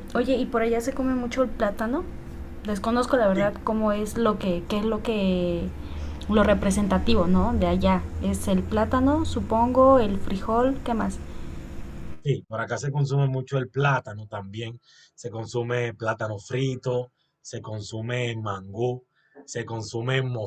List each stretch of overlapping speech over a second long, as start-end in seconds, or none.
none